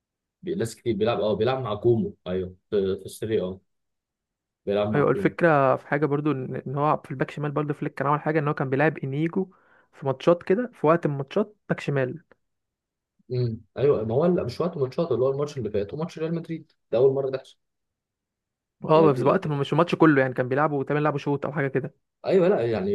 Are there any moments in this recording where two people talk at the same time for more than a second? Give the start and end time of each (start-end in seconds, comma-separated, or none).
none